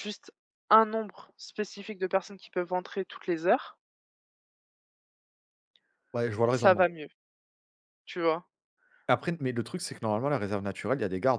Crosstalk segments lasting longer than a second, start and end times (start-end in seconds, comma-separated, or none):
none